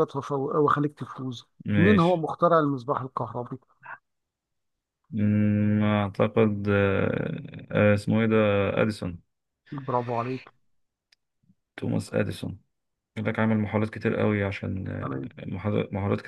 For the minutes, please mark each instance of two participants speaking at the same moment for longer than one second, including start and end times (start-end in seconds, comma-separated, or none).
none